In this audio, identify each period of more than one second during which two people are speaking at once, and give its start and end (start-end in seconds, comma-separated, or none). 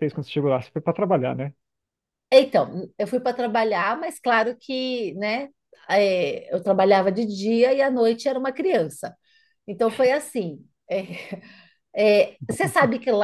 none